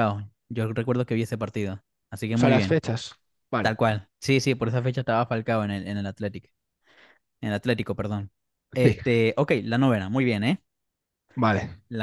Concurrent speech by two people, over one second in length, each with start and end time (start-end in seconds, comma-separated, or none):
none